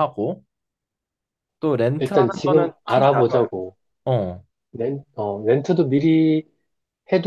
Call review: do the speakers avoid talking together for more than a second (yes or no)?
no